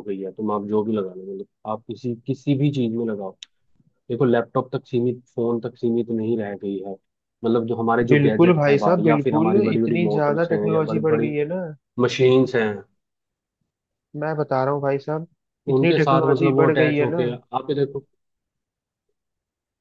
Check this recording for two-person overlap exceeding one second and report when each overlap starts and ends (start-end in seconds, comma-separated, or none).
8.1-11.4, 15.7-17.2